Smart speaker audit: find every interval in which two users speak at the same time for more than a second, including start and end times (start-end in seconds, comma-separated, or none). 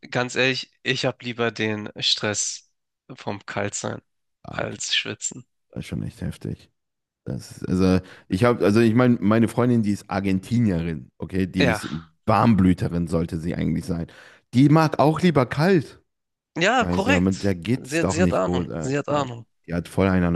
16.8-19.5